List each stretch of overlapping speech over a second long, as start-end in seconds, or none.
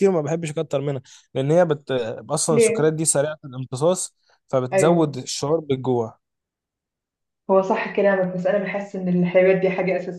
none